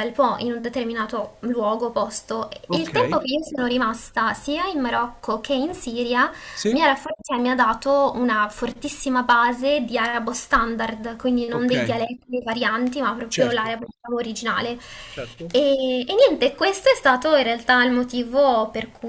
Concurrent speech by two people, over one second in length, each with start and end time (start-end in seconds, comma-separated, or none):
none